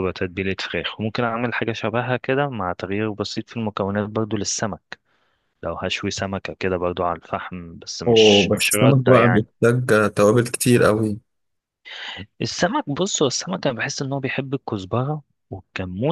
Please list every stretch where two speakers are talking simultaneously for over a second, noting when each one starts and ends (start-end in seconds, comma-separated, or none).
8.1-9.5